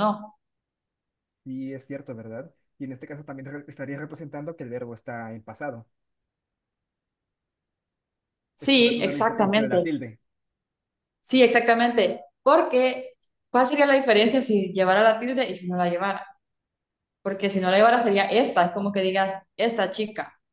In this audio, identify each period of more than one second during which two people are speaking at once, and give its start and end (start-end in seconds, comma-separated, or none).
8.6-9.9